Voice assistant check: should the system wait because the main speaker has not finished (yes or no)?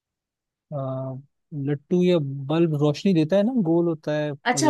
no